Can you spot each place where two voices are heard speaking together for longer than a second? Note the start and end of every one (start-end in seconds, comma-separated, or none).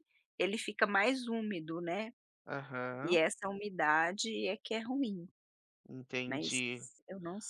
none